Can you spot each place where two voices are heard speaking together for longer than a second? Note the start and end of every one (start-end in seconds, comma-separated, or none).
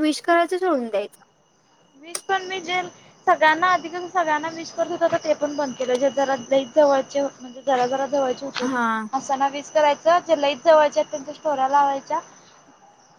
none